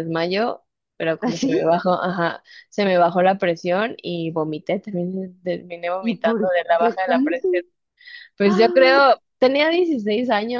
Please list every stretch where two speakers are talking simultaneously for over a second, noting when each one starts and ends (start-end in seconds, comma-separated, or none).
6.0-7.5